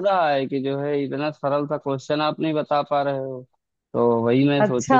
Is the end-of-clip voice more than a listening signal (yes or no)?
no